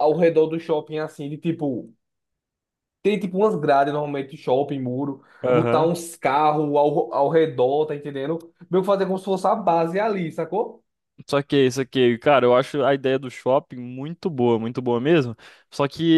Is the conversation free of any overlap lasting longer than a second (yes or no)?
yes